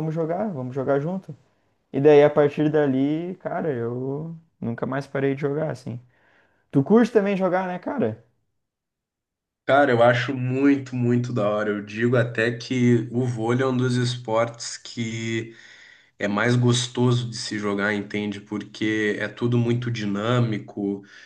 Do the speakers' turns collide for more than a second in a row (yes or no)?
no